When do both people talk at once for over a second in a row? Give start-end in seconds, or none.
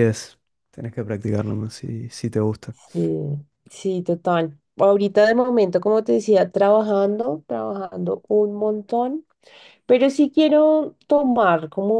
none